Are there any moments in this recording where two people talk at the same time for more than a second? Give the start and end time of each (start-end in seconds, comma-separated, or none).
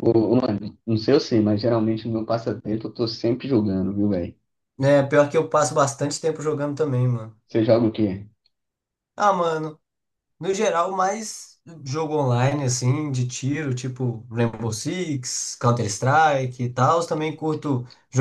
none